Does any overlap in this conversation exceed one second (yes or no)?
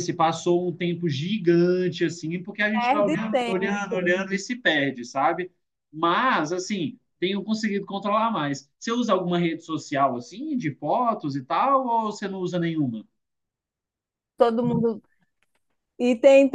yes